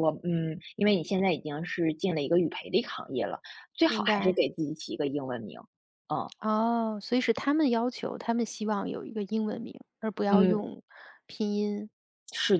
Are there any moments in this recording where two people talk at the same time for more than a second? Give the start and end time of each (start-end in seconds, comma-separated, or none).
none